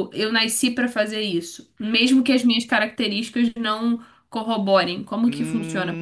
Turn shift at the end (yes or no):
yes